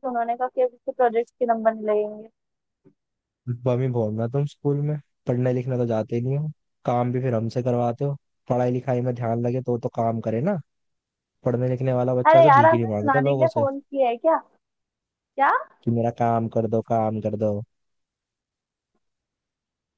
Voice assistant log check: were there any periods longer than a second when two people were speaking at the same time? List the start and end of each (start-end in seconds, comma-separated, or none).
12.3-13.6